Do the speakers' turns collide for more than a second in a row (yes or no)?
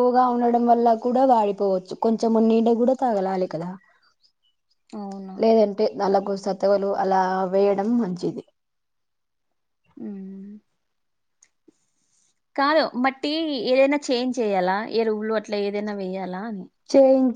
no